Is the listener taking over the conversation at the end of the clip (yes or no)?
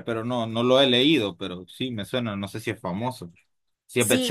yes